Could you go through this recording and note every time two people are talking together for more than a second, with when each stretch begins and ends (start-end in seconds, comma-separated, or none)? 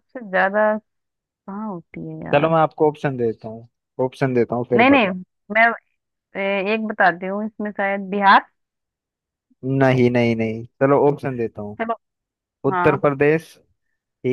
none